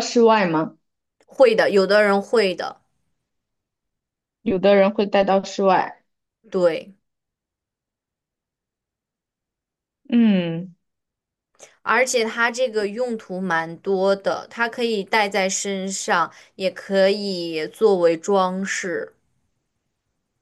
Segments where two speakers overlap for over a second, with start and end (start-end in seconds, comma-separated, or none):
none